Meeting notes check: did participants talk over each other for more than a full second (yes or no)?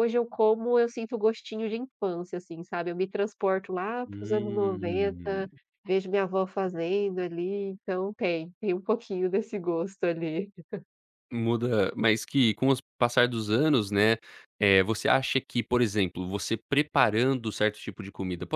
yes